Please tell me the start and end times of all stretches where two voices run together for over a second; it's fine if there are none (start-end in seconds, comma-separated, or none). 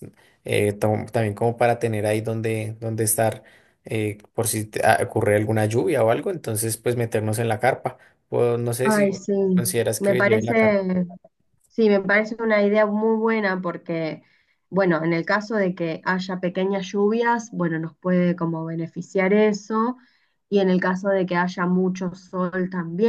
8.8-10.8